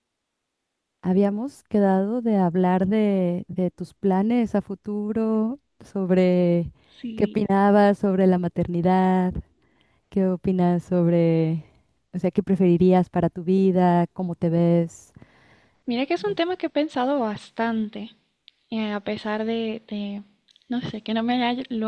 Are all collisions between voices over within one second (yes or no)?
yes